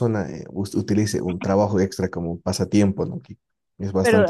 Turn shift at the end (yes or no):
no